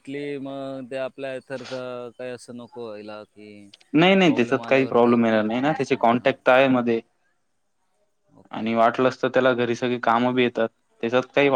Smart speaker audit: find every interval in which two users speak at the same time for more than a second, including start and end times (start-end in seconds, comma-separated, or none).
4.2-6.3